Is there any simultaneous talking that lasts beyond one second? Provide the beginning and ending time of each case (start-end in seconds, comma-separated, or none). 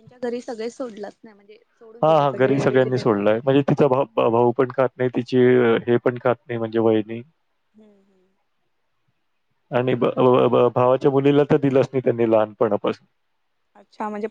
2.0-3.5